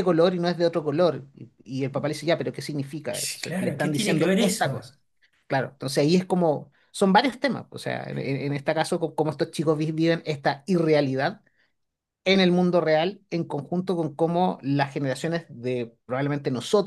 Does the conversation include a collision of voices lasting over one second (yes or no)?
yes